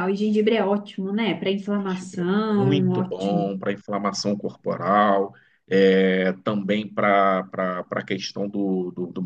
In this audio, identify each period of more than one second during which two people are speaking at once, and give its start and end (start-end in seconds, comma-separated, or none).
1.8-3.5